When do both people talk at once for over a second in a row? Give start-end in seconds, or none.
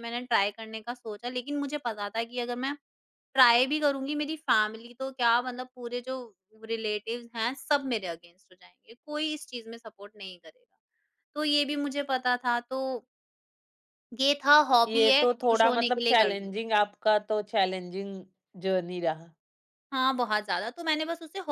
14.9-16.5